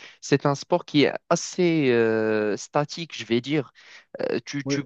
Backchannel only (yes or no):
yes